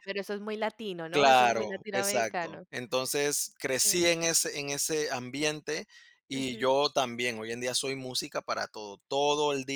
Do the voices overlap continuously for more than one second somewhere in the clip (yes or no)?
yes